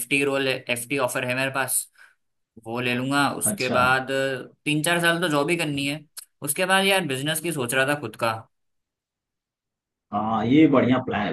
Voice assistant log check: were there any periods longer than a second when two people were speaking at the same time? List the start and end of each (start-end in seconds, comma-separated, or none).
none